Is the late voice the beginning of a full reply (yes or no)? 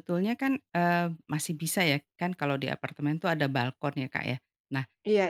no